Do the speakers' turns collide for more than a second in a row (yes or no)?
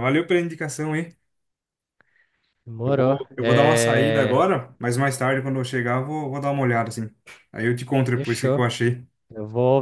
yes